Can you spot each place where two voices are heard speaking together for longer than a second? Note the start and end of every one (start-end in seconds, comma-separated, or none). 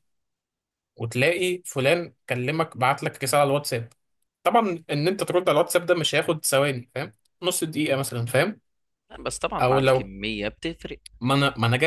none